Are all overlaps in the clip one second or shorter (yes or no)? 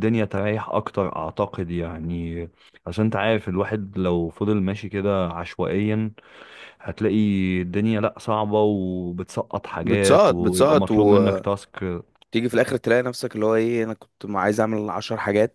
no